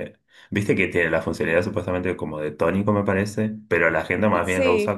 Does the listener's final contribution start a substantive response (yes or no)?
no